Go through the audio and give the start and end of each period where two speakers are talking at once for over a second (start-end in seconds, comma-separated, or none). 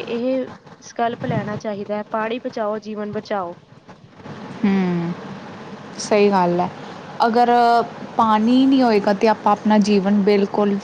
none